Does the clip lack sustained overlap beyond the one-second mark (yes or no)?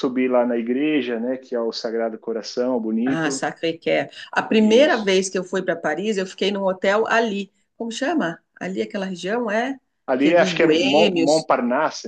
no